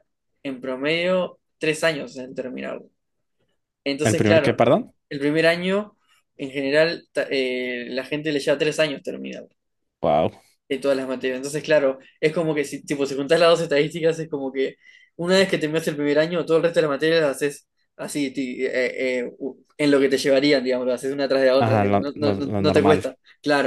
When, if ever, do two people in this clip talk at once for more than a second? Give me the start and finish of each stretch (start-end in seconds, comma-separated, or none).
21.6-23.0